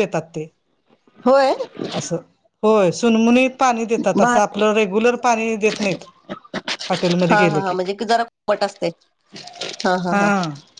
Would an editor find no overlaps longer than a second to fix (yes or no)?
yes